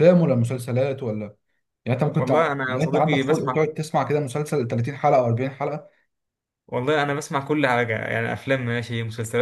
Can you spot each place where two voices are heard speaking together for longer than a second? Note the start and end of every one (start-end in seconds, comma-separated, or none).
2.2-3.7